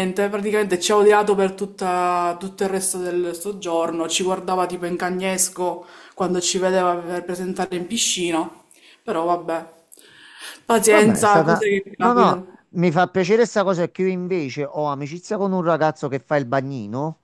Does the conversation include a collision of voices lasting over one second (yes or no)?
yes